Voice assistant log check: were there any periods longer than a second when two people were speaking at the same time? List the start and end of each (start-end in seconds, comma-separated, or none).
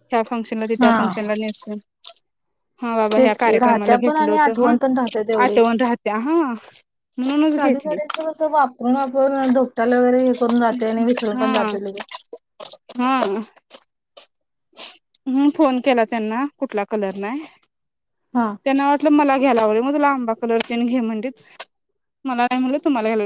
3.2-4.7